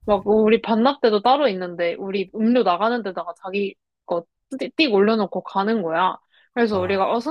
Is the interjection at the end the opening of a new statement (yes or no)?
no